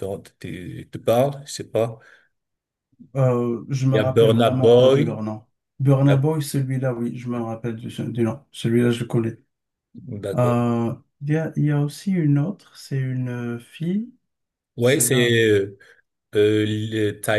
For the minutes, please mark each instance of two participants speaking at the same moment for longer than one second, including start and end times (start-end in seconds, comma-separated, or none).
3.9-5.2